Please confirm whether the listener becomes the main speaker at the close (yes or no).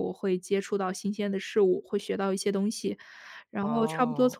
no